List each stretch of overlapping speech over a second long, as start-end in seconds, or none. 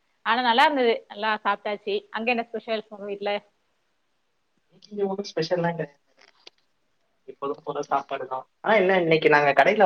none